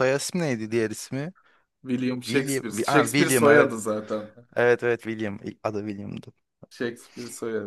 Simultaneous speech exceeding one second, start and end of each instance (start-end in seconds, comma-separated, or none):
2.3-3.8